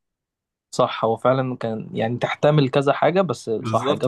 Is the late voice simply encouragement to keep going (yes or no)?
no